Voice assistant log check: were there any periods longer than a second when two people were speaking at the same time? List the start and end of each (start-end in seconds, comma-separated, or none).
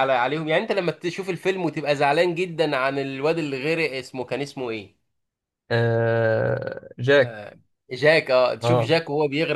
none